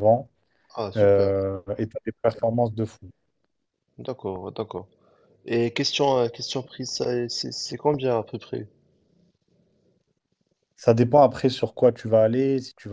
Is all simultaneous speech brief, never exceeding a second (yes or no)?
yes